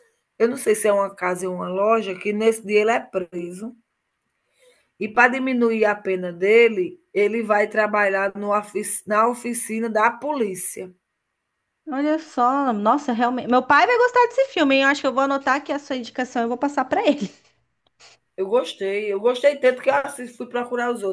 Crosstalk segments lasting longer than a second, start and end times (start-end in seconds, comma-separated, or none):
none